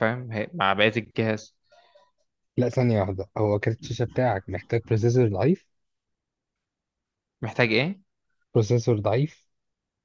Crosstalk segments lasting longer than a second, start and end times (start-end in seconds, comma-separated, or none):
none